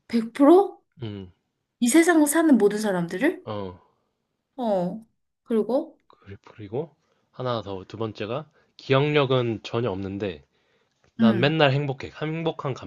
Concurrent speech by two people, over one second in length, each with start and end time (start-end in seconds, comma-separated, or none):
none